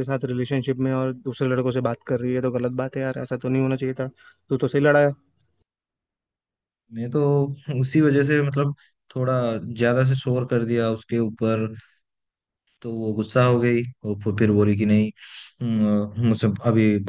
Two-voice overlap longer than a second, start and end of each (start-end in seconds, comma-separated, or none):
none